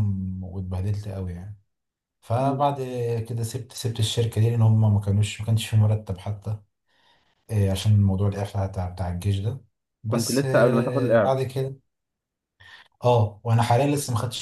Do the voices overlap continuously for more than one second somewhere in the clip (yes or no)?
yes